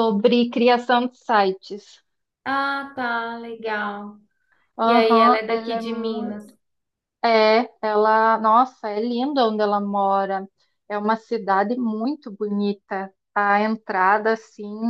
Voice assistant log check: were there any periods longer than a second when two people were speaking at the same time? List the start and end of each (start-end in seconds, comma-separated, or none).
4.8-6.4